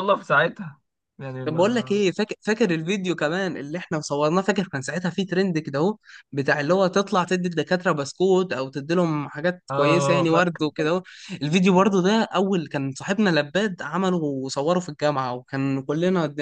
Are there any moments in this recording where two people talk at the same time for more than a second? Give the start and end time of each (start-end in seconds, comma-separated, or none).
9.7-10.9